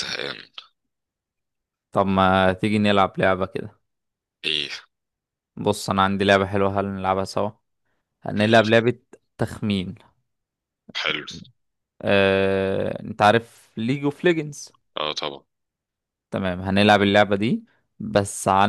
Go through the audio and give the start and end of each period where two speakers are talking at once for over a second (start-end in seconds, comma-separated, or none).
none